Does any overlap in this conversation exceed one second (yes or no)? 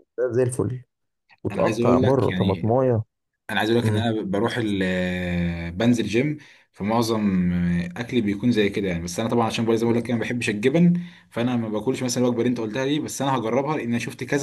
yes